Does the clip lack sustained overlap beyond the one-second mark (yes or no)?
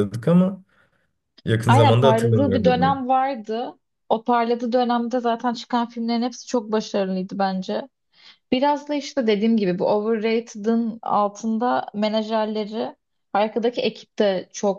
no